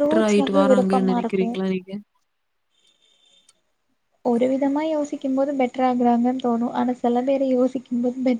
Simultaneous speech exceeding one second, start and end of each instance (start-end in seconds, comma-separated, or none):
none